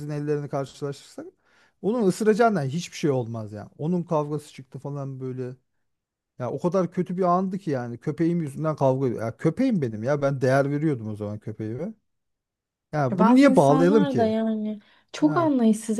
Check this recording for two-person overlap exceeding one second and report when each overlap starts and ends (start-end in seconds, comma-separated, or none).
13.1-14.3